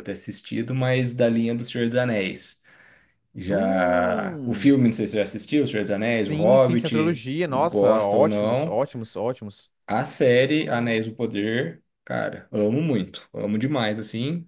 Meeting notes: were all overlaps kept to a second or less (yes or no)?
no